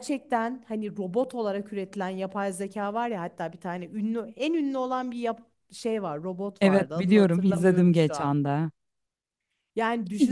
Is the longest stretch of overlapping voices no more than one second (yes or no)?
no